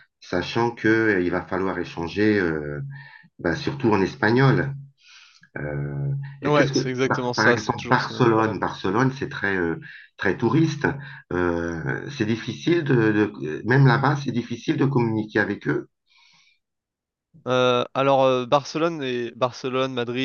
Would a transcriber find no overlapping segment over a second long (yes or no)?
no